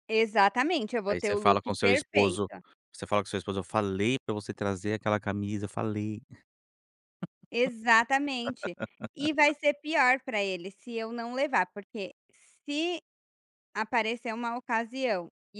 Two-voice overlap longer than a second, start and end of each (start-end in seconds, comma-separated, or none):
1.1-2.5